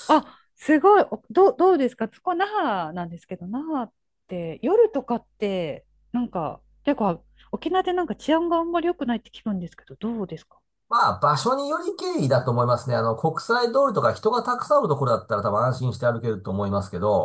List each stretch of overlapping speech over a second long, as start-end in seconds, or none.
none